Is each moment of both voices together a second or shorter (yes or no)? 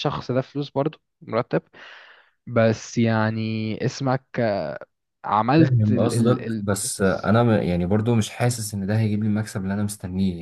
no